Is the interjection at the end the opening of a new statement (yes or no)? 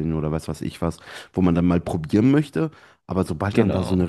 no